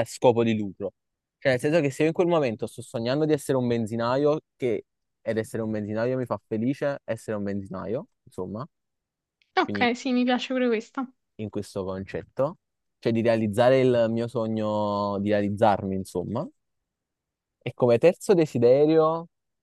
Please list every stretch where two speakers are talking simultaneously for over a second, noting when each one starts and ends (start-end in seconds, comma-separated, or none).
none